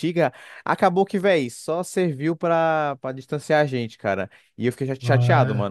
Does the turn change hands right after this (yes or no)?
no